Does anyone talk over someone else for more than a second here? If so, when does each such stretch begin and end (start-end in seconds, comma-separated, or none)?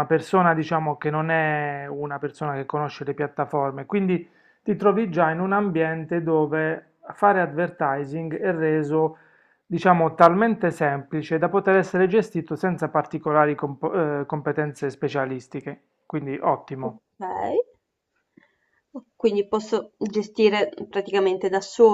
none